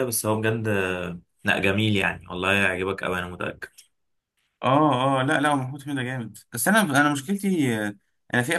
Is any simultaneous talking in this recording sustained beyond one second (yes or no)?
no